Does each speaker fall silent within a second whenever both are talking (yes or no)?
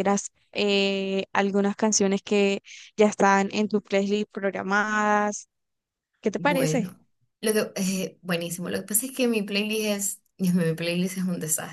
yes